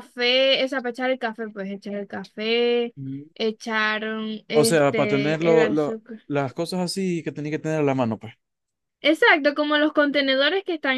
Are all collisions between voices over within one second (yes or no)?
no